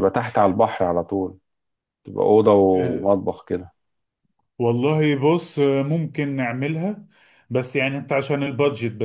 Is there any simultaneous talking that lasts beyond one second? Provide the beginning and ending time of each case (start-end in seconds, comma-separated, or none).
none